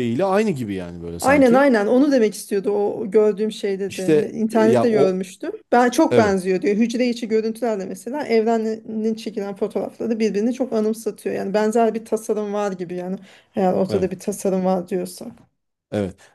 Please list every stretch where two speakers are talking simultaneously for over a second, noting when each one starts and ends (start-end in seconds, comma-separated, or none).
3.9-5.2